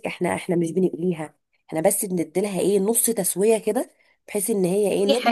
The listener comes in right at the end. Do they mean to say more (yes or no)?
no